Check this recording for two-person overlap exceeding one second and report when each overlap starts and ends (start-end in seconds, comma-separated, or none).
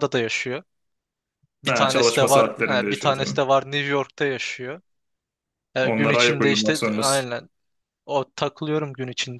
1.7-3.4, 5.8-7.3